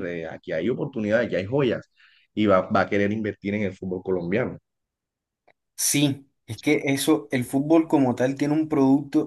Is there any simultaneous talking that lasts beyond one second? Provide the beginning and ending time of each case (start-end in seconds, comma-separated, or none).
none